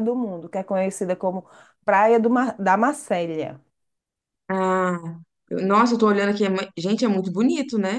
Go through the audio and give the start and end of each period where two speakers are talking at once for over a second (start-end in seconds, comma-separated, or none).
none